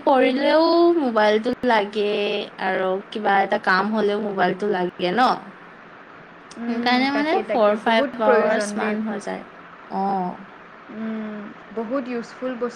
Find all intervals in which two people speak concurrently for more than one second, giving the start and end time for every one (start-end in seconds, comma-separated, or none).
7.2-8.9